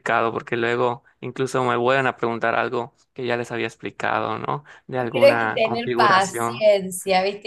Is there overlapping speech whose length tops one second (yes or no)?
yes